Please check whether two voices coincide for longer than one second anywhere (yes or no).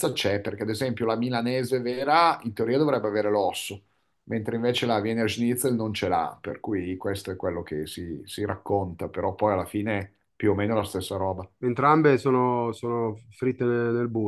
no